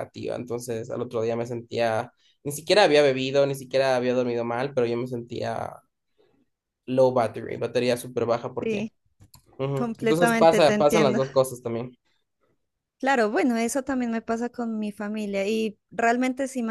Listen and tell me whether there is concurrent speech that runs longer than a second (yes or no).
yes